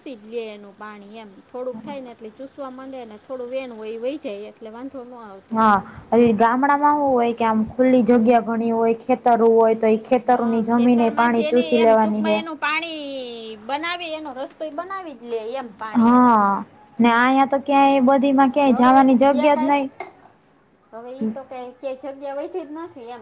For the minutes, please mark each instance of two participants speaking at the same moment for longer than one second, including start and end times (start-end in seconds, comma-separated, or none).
10.3-12.4